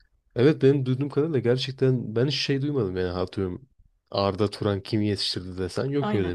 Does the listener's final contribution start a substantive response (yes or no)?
no